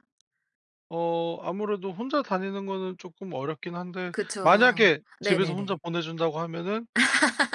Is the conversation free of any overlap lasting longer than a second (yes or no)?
no